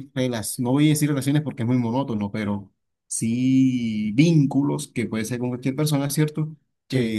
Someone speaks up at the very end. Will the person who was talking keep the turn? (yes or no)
yes